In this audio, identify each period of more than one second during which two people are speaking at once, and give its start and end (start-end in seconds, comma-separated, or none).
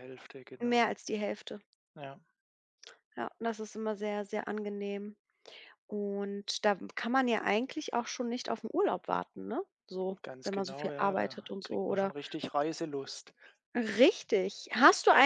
10.2-12.1